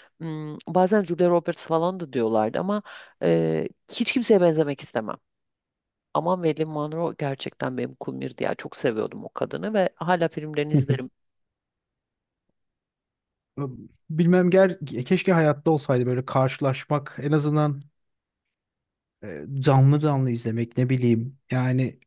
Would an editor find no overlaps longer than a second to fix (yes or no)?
yes